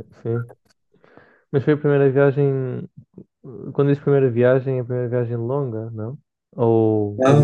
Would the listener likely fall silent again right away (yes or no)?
no